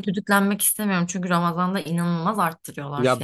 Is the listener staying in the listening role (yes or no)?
no